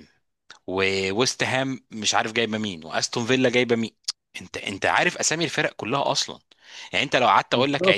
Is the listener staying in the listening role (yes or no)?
yes